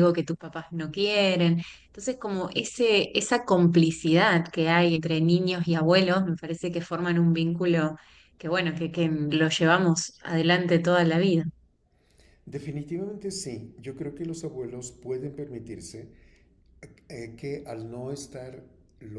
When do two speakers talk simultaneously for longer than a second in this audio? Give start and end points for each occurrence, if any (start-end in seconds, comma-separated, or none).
none